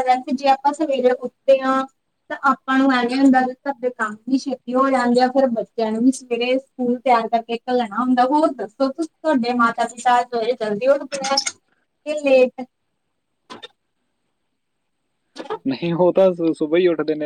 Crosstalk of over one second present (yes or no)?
no